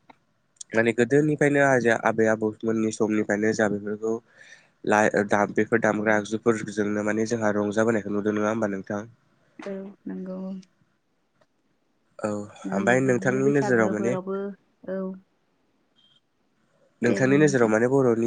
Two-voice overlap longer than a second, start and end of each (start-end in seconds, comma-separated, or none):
12.8-14.1